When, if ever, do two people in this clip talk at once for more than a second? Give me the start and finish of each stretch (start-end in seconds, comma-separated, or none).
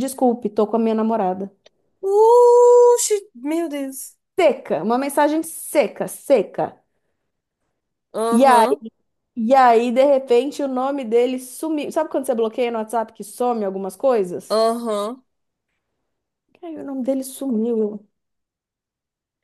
none